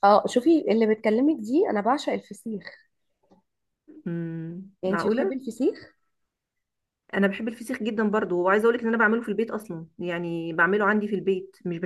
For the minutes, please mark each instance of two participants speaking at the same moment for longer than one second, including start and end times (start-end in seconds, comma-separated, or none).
none